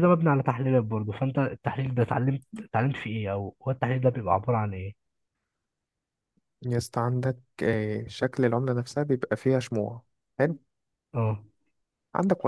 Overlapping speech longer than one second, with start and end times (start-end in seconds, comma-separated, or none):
none